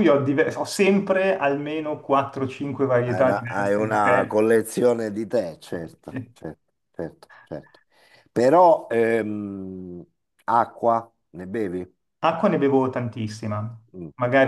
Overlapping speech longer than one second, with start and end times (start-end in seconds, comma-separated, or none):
3.0-4.4